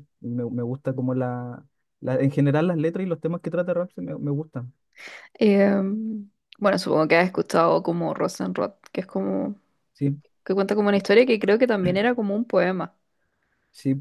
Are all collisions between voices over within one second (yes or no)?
yes